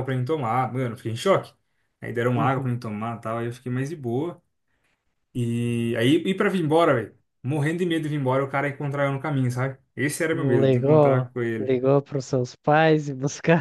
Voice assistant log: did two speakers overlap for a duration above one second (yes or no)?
yes